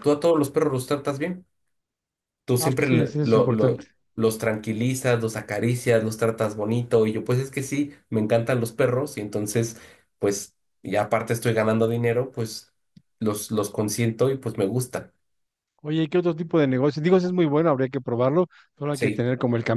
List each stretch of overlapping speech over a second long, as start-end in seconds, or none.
2.6-3.8